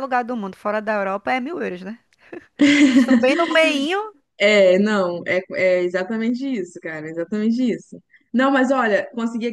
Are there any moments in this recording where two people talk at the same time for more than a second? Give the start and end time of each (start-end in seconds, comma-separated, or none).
none